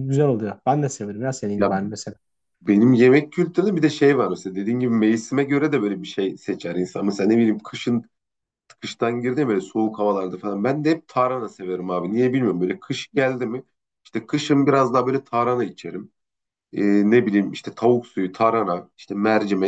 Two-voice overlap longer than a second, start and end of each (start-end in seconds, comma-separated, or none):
none